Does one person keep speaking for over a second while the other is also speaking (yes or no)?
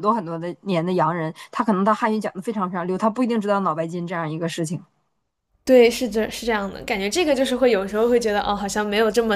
no